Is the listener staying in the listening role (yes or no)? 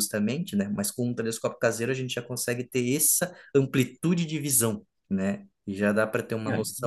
yes